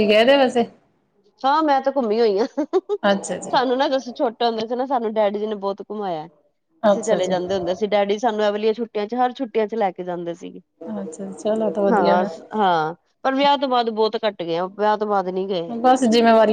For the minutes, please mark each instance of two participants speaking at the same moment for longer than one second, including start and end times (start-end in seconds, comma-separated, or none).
none